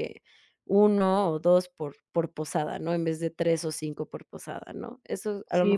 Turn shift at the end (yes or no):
yes